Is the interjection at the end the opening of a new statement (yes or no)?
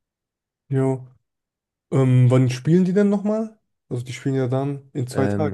yes